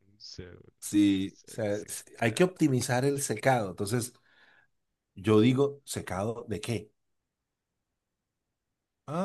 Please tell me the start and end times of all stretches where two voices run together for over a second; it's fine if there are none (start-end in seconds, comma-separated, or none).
1.2-2.5